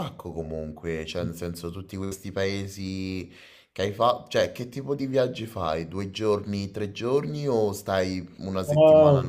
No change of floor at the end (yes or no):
no